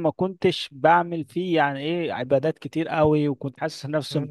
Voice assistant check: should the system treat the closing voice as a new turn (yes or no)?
no